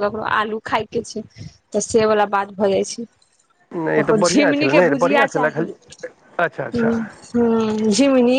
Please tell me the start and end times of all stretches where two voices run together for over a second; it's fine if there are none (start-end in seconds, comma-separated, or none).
4.0-5.7